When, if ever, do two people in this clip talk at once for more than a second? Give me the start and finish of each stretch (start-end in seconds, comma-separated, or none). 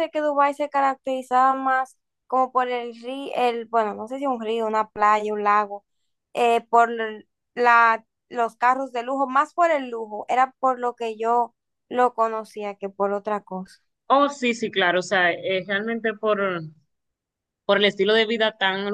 none